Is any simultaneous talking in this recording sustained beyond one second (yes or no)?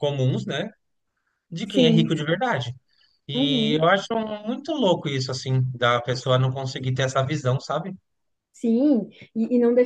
no